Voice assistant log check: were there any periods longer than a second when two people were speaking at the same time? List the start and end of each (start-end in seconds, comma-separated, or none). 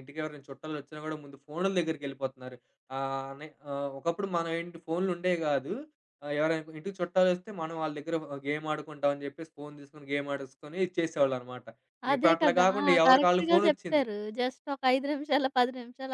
12.2-14.1